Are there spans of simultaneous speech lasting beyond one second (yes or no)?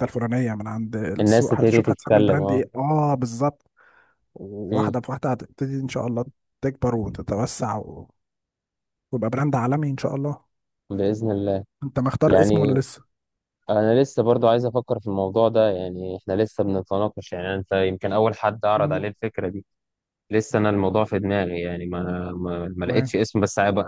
yes